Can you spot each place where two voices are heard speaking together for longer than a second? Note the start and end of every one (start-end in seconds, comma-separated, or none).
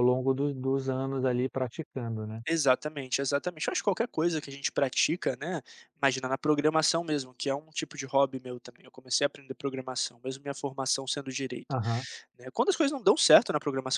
none